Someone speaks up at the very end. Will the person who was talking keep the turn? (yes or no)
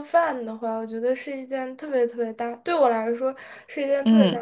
yes